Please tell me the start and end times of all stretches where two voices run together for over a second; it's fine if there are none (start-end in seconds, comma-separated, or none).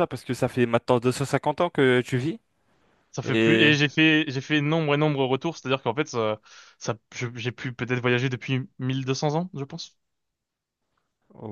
none